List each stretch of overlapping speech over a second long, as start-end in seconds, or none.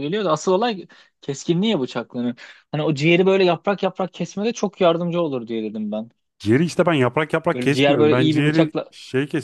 7.5-8.9